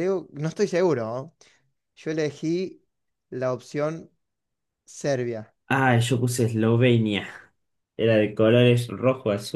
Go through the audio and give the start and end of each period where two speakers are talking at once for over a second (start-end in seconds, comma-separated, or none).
none